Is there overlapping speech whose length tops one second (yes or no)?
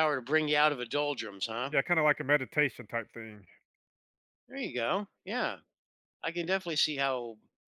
no